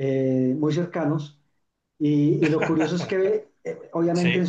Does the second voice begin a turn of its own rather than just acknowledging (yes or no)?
no